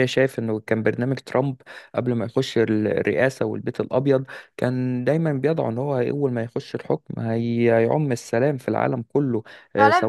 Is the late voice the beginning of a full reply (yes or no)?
yes